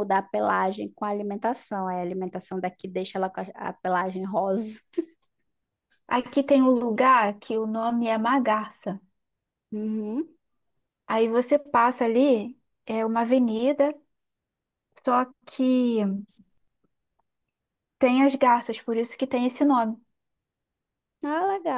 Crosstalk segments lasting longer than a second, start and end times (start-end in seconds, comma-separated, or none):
none